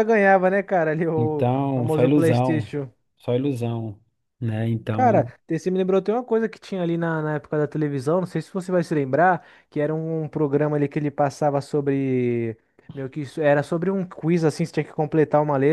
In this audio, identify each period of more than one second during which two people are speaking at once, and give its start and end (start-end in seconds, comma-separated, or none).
1.1-2.7